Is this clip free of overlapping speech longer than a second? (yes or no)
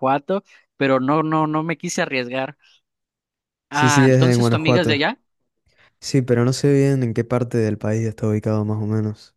no